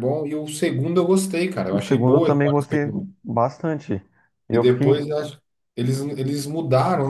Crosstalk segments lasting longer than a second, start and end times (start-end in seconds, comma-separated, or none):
1.7-3.1